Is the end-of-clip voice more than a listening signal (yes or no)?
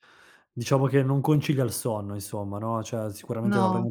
no